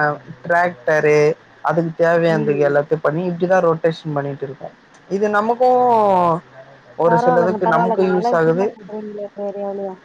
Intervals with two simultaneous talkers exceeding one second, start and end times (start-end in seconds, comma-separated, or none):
none